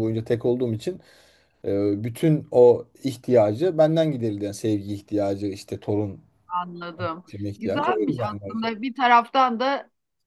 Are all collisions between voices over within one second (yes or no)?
no